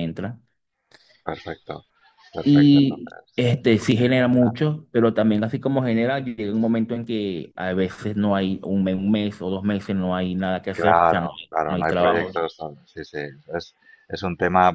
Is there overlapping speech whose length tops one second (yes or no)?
yes